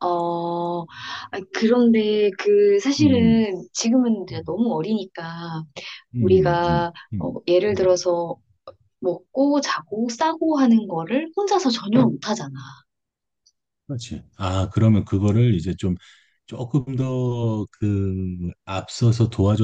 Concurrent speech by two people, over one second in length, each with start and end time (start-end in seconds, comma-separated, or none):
6.2-8.0